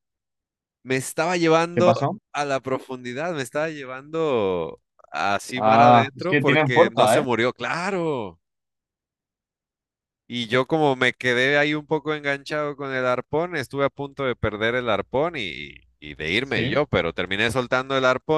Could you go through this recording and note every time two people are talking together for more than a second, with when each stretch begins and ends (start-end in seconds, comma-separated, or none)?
5.5-7.2